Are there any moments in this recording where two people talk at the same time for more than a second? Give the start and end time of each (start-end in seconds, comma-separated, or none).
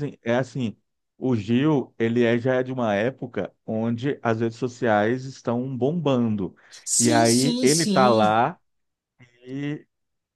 7.0-8.4